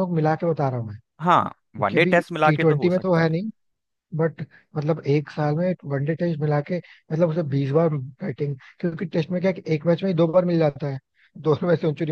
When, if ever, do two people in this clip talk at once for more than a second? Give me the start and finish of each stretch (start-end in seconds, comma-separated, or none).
1.8-3.3